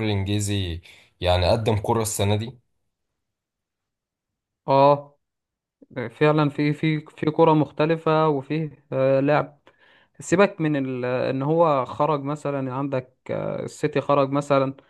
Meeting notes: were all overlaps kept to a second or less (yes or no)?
yes